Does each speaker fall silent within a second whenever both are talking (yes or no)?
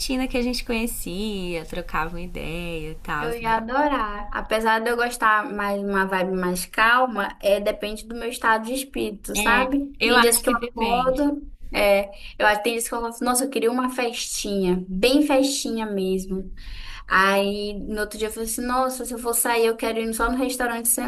no